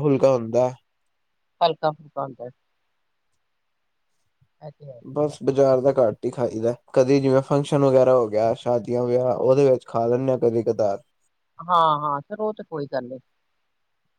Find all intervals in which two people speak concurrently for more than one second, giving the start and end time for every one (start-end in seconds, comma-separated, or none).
none